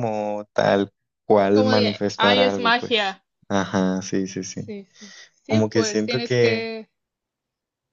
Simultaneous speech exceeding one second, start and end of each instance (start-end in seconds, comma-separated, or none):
1.5-3.2, 5.5-6.7